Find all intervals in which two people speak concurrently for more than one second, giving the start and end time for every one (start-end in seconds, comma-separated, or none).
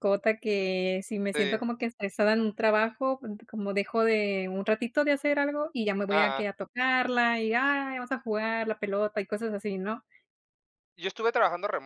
none